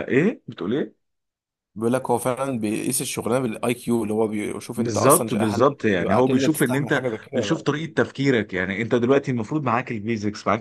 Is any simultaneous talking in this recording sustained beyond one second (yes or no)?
yes